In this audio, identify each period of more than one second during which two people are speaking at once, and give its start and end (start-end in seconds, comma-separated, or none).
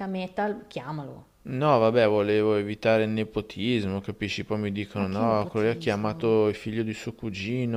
5.0-6.3